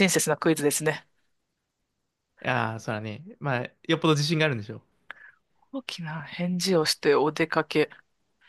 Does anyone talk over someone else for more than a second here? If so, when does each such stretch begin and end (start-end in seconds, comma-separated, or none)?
none